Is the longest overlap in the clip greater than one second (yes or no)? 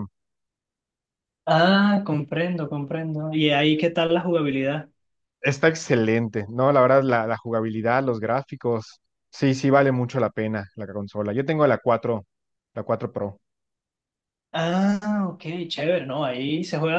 no